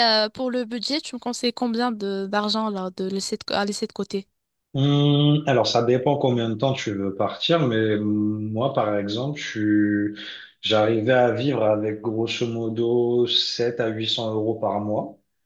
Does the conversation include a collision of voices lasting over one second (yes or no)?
no